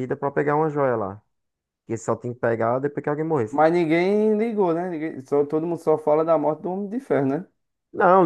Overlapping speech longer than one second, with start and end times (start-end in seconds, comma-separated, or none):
none